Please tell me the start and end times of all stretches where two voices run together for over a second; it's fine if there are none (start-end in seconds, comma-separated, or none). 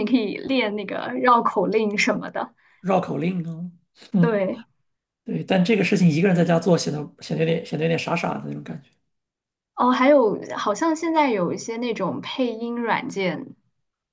none